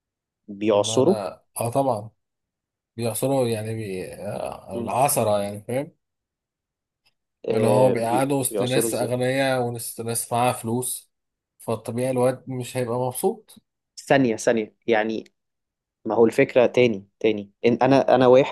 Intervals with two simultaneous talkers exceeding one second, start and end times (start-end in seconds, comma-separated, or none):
7.5-9.1